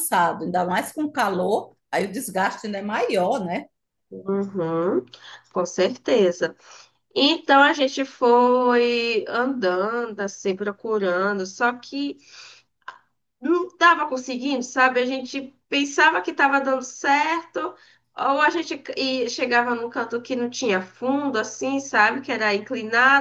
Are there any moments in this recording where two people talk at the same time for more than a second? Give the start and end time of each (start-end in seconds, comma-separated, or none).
none